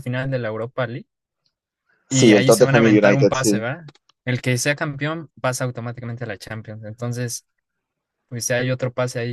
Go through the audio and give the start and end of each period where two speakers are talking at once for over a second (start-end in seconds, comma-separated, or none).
2.1-3.6